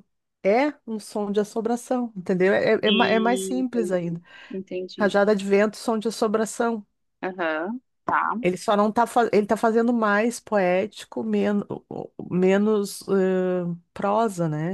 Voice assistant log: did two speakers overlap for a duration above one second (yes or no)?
yes